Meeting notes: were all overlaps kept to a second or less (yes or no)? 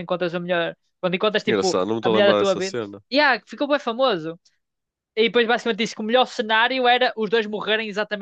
no